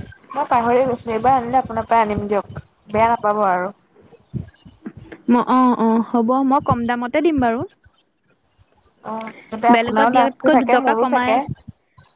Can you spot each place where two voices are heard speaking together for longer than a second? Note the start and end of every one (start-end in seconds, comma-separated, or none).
9.7-11.3